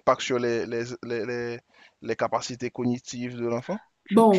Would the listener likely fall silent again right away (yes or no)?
no